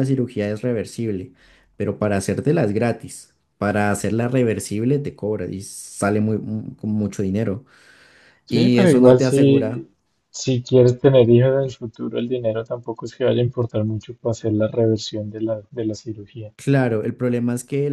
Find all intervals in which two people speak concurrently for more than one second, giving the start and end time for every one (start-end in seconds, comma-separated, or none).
8.5-9.8